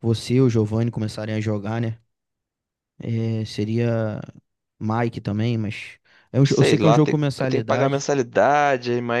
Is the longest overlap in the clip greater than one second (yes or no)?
yes